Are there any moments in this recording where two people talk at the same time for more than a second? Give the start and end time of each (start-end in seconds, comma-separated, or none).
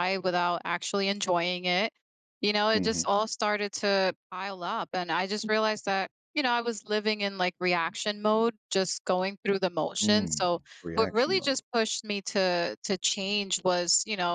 10.0-11.6